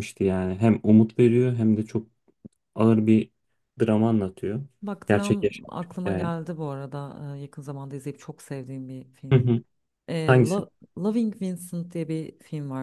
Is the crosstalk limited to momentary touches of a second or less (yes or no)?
no